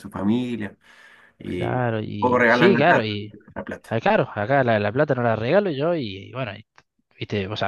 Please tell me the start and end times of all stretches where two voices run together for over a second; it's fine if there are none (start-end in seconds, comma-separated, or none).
1.4-3.1